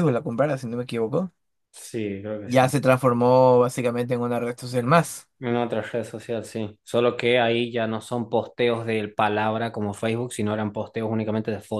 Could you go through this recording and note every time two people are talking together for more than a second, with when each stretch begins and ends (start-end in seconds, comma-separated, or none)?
none